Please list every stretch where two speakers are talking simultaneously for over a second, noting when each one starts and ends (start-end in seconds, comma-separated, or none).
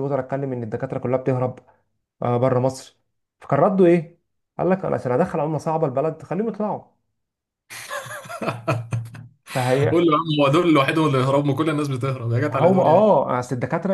none